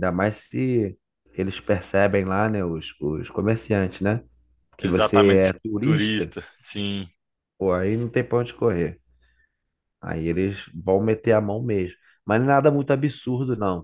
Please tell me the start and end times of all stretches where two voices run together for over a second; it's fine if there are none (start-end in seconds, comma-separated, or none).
4.8-6.3